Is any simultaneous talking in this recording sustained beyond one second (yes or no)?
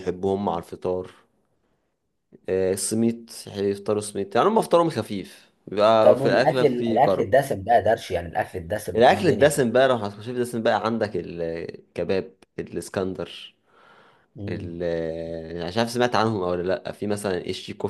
yes